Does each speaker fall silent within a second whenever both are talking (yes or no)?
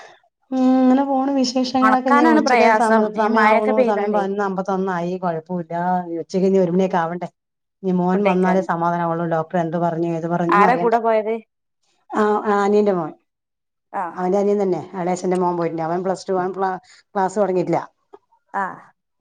no